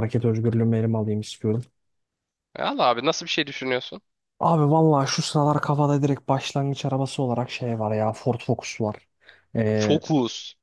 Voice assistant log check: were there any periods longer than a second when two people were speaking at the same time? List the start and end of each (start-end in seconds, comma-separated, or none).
none